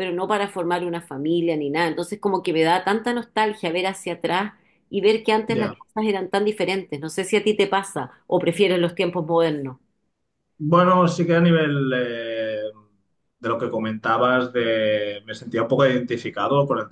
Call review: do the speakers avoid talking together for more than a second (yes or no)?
yes